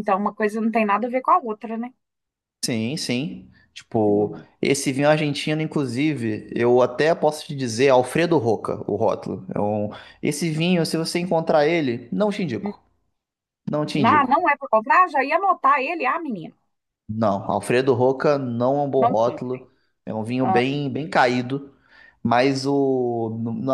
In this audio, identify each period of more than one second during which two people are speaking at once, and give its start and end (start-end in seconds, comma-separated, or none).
none